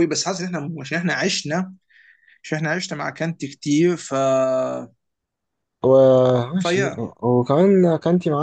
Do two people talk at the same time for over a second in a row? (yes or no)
no